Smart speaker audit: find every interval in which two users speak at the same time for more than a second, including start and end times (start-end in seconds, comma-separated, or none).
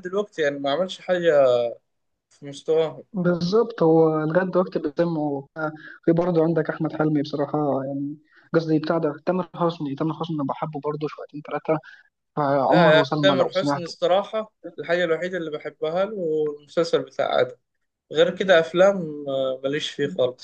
12.7-13.9